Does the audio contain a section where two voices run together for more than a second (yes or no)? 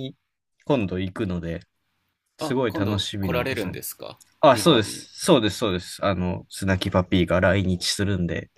yes